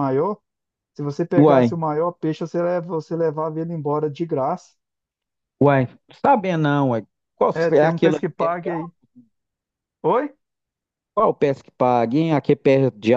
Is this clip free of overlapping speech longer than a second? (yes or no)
no